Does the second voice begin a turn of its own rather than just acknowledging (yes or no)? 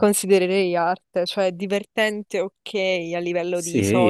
yes